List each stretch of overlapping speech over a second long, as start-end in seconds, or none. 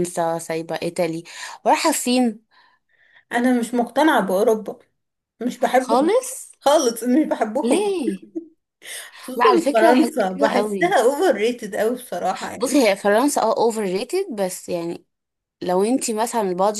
9.4-11.0